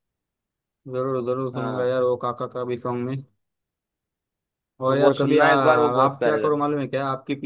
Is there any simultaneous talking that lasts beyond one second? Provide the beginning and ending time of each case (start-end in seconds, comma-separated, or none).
4.9-6.6